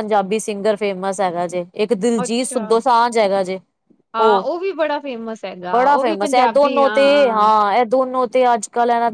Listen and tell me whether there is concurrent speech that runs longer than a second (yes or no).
yes